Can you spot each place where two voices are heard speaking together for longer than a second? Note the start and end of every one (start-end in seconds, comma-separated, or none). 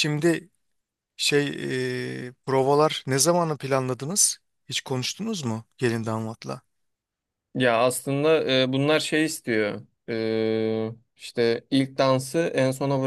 none